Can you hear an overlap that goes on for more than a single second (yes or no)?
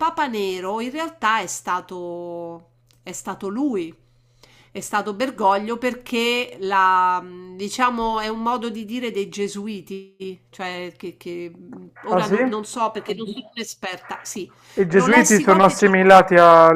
yes